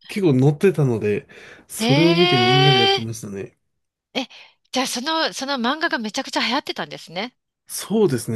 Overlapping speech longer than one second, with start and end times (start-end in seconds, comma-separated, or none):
1.8-3.0